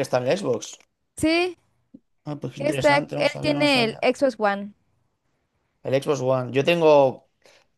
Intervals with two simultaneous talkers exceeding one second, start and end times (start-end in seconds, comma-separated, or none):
2.5-4.1